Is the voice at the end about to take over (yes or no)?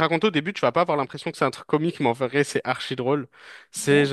no